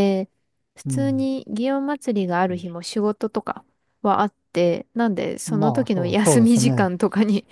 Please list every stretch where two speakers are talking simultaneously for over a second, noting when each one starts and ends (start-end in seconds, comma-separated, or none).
5.5-6.9